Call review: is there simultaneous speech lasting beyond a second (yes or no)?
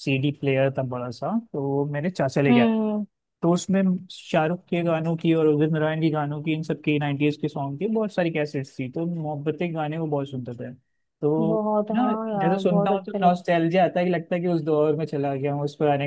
yes